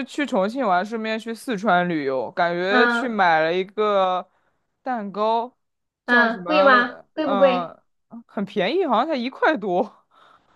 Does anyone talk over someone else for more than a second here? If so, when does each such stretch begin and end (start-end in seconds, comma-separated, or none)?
6.1-7.7